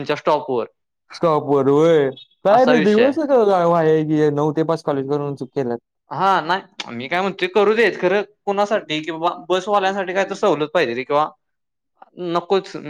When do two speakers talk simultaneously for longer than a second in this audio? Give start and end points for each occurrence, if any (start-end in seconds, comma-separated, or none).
none